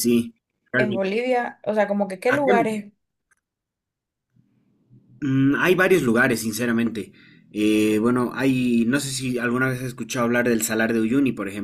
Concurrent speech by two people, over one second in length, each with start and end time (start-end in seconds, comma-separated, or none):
none